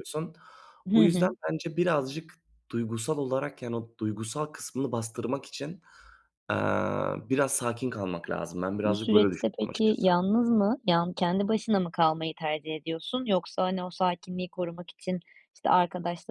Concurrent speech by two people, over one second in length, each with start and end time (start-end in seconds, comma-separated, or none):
8.8-10.1